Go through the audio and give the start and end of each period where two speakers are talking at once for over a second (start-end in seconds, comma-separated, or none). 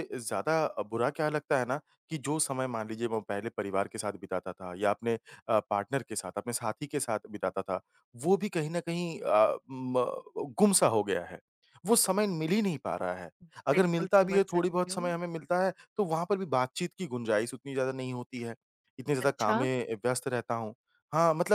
13.7-15.1